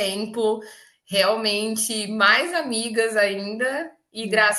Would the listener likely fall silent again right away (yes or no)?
yes